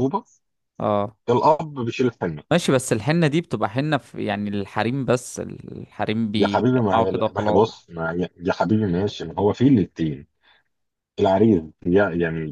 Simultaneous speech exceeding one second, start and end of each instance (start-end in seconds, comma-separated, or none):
6.3-7.6